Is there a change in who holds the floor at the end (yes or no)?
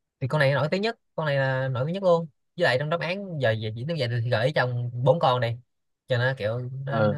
yes